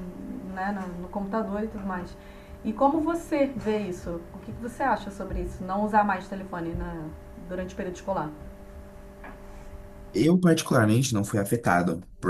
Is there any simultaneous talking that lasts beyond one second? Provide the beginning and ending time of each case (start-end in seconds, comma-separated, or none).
none